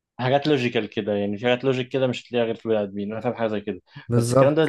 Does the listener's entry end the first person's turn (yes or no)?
no